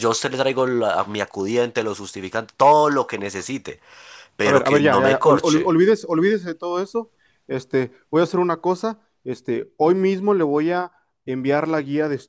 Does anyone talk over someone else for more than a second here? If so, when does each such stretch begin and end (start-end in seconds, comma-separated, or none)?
4.4-5.8